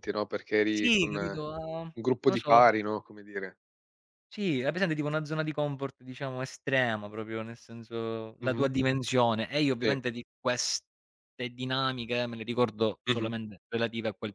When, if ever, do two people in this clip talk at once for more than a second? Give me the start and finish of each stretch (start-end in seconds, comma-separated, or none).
0.7-2.7